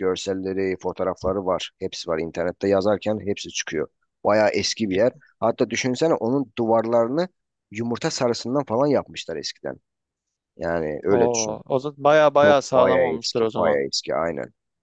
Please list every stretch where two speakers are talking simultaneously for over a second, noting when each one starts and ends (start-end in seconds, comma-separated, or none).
12.4-13.8